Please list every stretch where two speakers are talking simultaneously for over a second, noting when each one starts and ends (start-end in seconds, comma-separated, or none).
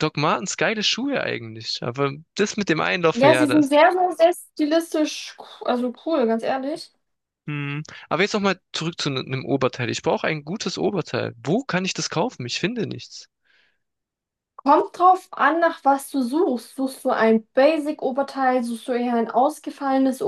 none